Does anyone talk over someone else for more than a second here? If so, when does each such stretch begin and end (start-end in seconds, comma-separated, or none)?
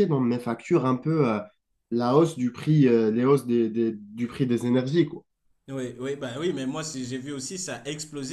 none